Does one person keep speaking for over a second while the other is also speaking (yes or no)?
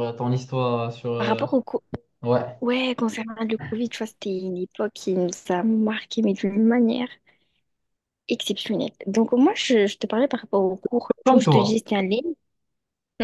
no